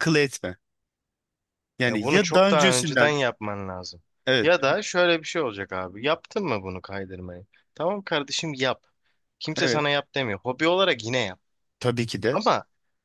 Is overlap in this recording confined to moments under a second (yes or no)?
no